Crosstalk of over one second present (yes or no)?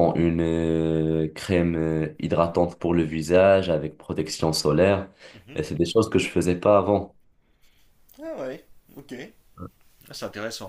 no